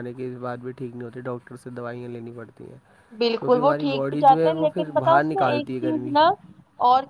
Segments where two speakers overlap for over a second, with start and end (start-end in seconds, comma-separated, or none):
3.4-6.2